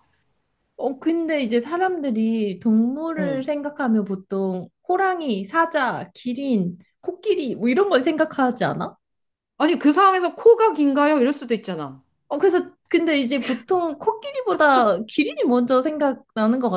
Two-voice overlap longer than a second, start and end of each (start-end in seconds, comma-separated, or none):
none